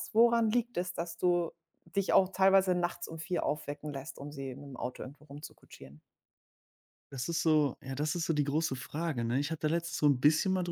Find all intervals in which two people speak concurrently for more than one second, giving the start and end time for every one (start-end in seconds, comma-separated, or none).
none